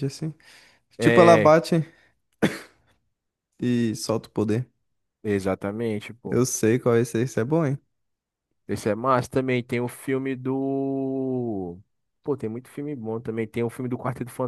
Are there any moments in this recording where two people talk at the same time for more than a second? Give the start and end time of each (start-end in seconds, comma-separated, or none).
none